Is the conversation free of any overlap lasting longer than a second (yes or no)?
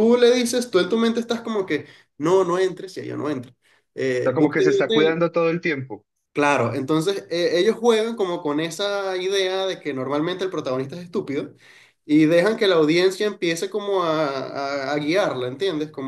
no